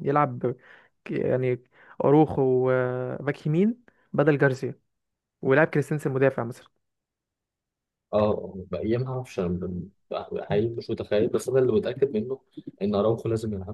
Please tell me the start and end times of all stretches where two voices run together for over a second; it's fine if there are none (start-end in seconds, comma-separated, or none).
none